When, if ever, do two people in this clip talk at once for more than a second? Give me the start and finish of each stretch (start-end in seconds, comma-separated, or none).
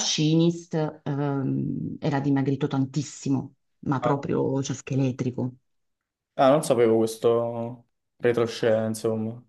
none